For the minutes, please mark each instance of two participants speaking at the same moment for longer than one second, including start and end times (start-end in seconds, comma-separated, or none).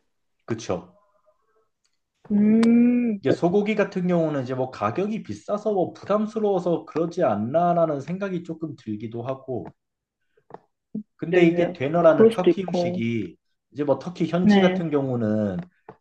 11.3-13.0